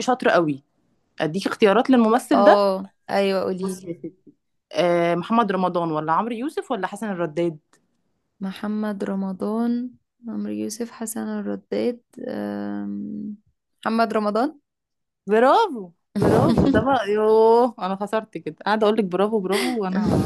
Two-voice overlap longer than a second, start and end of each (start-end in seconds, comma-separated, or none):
none